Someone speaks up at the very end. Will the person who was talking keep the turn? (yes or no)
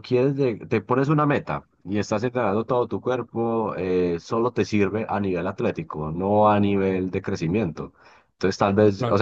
yes